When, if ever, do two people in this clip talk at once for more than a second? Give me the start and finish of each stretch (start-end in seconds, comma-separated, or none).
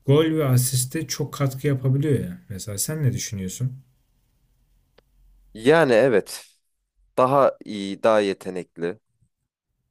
none